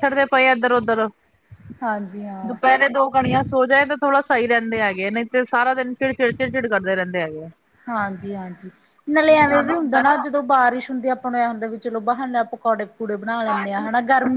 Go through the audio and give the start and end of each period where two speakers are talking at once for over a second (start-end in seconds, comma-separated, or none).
none